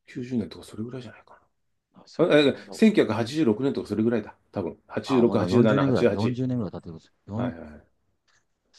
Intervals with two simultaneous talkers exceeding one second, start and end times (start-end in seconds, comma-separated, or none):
5.0-6.4